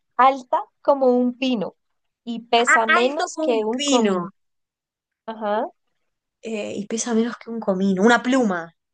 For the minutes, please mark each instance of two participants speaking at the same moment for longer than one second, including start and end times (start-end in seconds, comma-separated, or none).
2.6-4.3